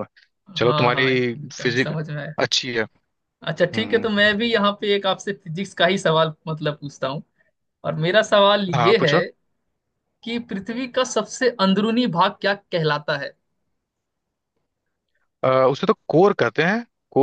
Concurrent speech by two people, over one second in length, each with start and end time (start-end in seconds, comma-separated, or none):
0.6-1.9